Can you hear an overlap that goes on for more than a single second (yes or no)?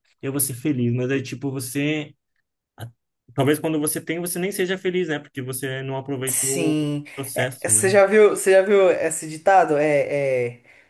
yes